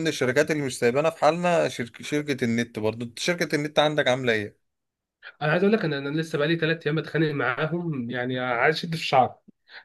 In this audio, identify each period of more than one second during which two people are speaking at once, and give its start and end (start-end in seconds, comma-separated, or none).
none